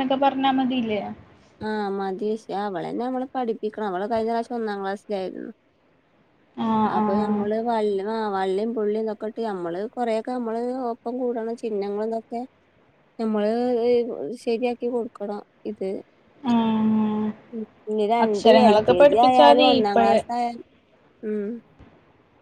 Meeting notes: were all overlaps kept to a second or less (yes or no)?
no